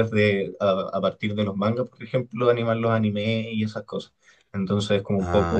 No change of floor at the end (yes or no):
yes